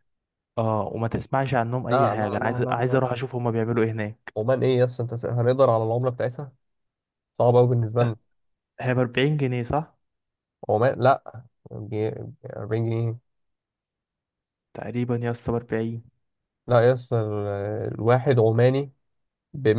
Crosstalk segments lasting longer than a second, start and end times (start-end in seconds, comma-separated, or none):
1.9-3.2